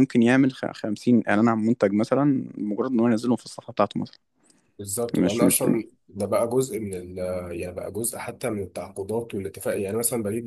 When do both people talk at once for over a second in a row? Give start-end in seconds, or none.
none